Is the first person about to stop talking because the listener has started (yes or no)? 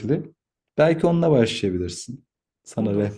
yes